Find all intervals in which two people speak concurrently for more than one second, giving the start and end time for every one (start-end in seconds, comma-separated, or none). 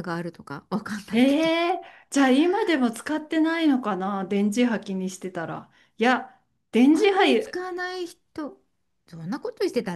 none